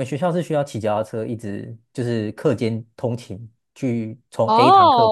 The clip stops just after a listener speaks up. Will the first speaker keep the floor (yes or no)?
no